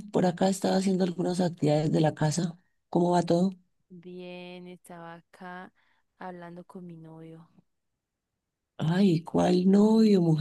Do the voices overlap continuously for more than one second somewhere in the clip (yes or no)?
no